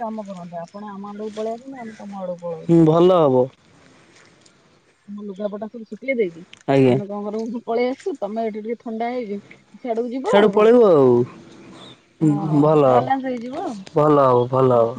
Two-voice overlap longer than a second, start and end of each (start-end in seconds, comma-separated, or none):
none